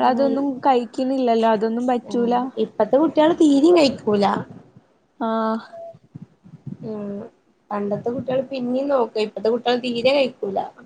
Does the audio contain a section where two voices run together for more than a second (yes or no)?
no